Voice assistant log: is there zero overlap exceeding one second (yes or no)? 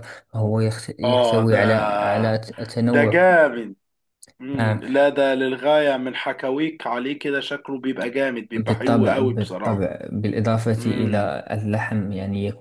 no